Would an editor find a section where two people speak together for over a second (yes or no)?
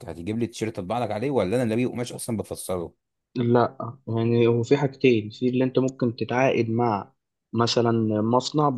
no